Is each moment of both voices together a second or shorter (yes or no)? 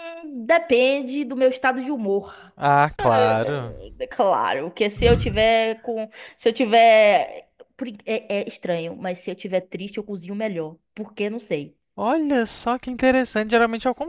yes